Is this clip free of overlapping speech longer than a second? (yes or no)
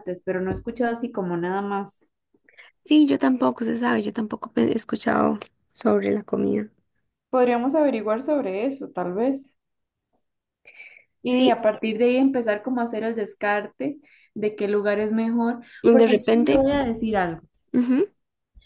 yes